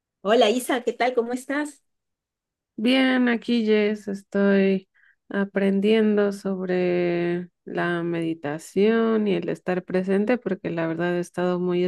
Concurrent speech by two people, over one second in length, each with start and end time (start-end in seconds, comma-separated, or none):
none